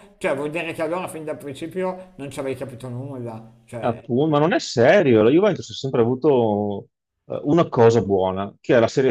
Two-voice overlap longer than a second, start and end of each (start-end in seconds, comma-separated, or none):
none